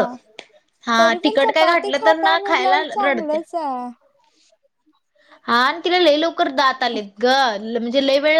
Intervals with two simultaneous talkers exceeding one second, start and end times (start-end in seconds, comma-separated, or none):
1.0-3.4